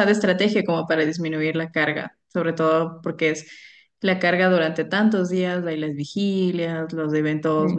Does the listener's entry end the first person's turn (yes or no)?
no